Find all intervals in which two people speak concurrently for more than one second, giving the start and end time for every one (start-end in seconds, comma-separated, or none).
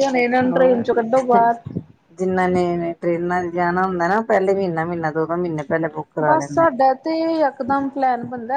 none